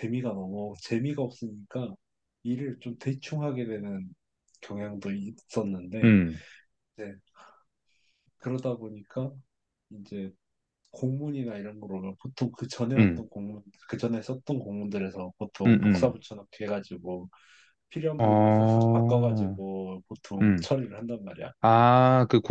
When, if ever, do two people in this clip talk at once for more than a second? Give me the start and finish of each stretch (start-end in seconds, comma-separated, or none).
18.2-19.6